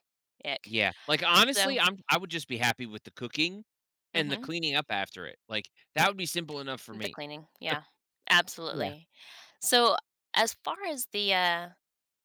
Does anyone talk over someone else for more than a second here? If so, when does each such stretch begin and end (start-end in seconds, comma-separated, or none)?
none